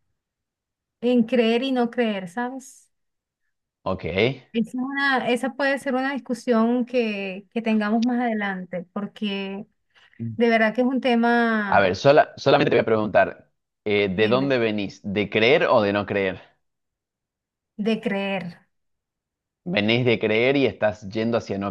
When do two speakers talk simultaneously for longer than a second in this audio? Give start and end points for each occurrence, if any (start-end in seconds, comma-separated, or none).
none